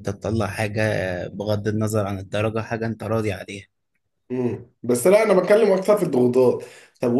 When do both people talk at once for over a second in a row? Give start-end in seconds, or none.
none